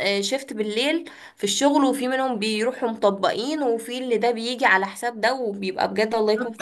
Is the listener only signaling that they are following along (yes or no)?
no